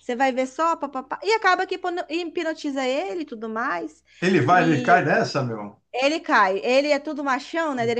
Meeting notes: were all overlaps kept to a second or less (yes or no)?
yes